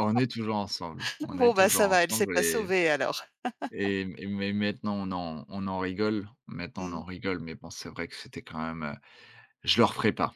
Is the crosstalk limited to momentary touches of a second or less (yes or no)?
no